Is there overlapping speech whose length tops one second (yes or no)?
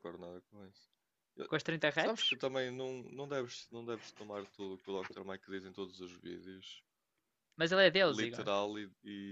no